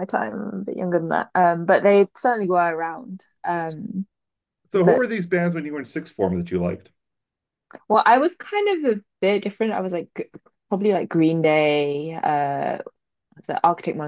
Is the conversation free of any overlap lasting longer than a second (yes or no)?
yes